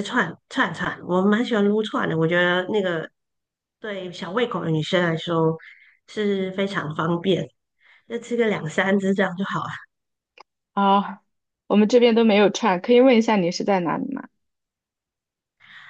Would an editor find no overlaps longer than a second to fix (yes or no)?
yes